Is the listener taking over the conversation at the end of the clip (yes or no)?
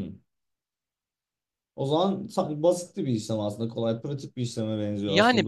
yes